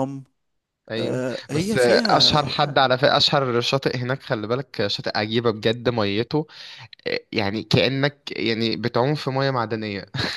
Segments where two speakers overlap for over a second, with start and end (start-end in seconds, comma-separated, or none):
1.0-2.6